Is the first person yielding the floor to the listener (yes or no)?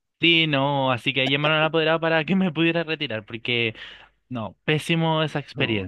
yes